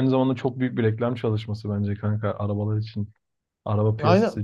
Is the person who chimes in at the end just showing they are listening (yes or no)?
no